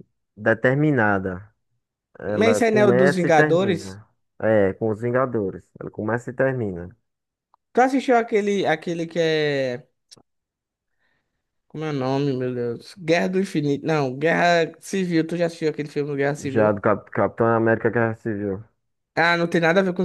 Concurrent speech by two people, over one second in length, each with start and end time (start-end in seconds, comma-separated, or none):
2.3-4.0